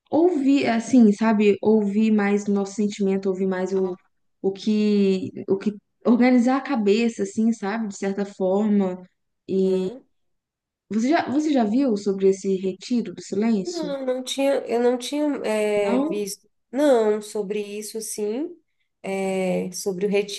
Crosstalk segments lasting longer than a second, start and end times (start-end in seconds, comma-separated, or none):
none